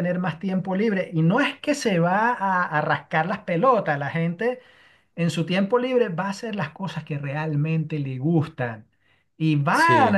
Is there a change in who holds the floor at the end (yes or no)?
no